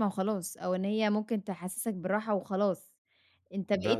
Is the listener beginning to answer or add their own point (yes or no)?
no